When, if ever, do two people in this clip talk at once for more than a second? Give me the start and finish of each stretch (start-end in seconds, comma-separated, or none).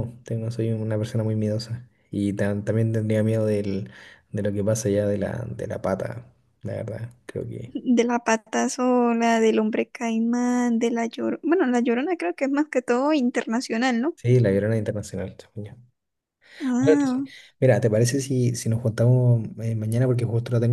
none